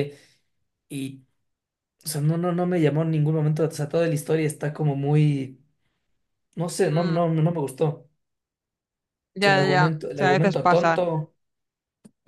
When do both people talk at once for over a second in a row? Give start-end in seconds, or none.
9.4-11.0